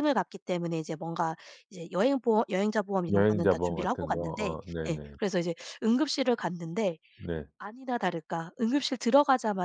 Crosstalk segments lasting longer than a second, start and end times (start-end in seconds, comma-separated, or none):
3.1-5.2